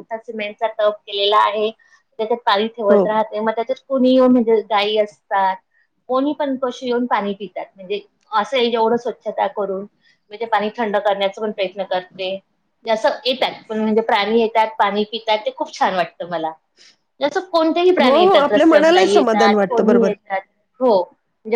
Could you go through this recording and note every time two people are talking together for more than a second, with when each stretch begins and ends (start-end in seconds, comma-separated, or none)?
18.0-20.1